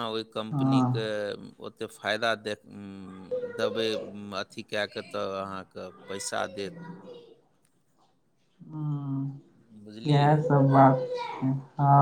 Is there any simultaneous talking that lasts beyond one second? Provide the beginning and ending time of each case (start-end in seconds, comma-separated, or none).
none